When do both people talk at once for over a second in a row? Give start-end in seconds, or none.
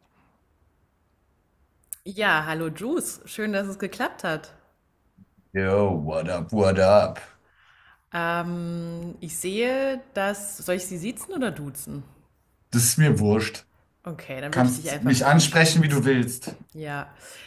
14.5-16.1